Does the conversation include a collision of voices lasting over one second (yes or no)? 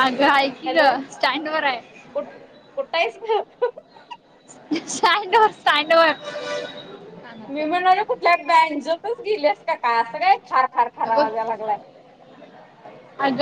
no